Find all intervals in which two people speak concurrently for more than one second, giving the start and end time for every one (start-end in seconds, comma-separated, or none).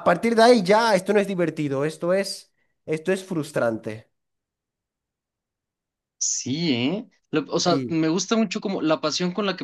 none